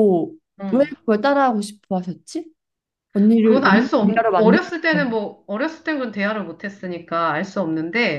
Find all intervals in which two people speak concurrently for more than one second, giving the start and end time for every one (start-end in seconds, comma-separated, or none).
3.4-5.2